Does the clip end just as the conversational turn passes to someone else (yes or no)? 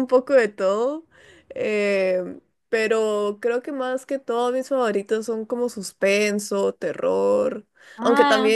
no